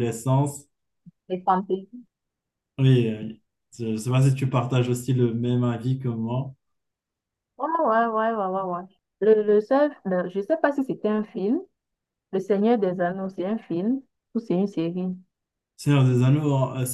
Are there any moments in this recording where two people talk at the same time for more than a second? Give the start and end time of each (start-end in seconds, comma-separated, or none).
none